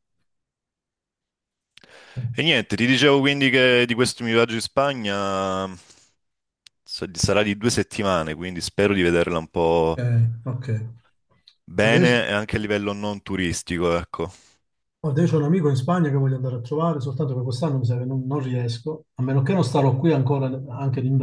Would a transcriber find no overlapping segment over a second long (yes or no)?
yes